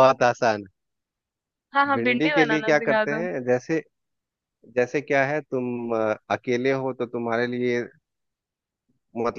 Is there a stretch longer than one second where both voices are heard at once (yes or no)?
yes